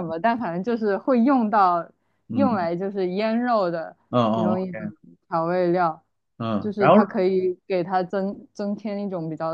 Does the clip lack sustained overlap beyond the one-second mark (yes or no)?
yes